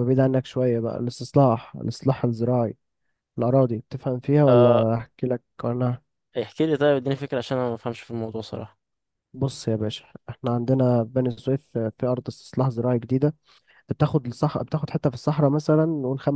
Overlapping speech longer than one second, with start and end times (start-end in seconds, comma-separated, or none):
none